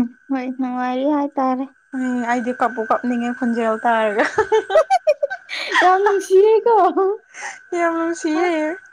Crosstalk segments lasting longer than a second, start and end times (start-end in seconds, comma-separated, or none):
none